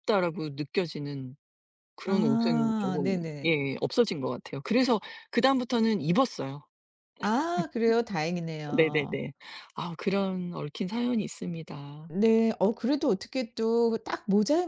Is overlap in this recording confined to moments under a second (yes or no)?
no